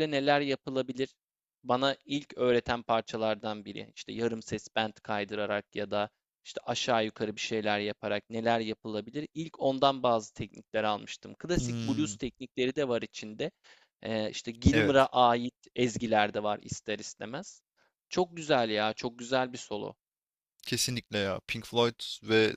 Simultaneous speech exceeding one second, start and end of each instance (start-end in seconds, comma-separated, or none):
none